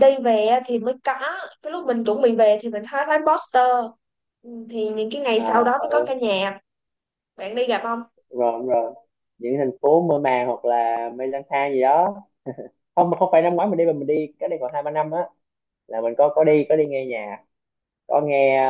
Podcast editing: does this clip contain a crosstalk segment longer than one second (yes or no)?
no